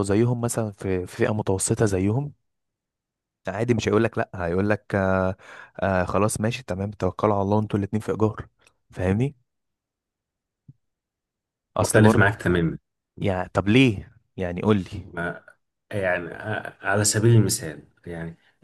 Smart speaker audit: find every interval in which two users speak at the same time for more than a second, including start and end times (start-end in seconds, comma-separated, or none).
none